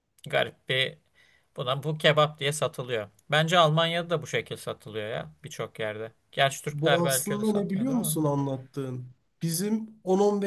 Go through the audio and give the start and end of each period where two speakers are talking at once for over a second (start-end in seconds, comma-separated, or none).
6.7-8.2